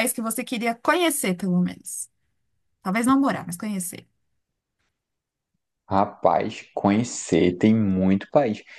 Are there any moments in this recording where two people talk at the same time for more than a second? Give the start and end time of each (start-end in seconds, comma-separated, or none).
none